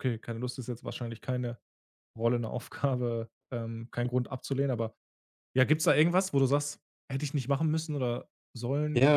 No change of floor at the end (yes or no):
no